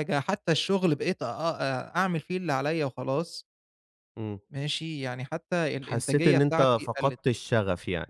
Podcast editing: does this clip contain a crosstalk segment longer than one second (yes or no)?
yes